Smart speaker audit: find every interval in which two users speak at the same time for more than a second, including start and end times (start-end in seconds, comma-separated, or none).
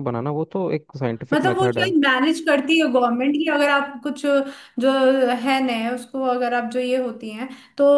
none